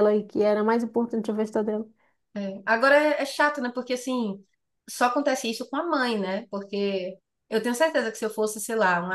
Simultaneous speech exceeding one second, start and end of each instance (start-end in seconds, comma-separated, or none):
none